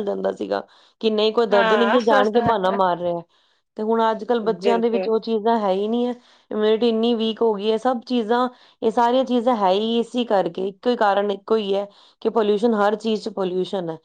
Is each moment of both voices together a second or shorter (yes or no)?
no